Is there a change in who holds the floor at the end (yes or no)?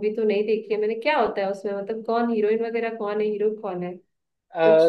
yes